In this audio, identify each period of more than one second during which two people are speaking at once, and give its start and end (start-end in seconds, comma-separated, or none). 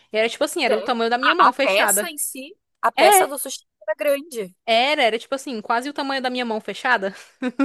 0.7-2.1